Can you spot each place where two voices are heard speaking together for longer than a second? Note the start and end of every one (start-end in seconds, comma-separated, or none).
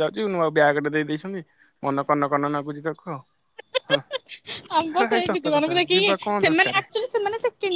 5.0-6.8